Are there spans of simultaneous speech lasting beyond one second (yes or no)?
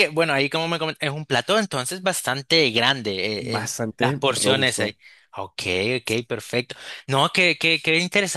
yes